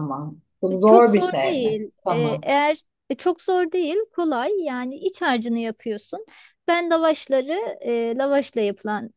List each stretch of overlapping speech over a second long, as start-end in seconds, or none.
0.8-2.5